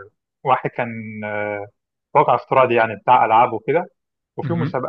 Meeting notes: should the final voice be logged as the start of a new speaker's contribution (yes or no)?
no